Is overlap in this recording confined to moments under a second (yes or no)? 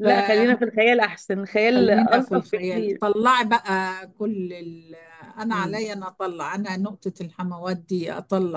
no